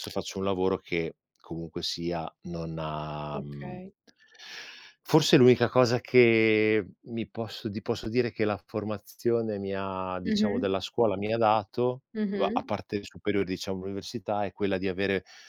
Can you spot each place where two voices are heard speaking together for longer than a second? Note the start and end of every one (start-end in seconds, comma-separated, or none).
none